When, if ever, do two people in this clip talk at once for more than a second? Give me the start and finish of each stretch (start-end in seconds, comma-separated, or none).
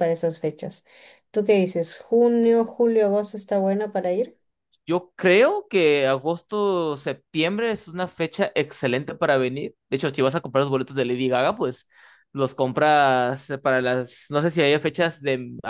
none